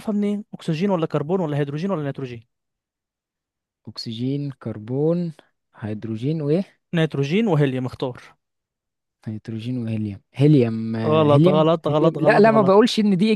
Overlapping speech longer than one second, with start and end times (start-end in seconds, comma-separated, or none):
11.1-12.8